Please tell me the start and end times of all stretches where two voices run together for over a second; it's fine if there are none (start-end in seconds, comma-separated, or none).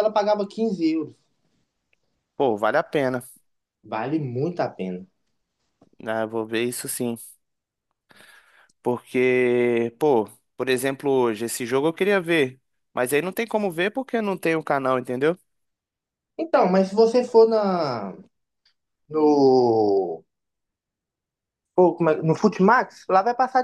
none